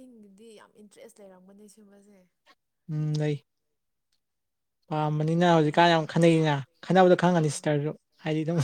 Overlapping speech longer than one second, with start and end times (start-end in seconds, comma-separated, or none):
4.9-6.4